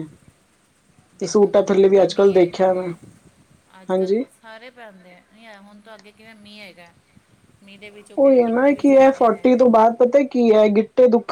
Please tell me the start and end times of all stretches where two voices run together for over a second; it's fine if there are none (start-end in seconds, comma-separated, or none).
1.2-2.8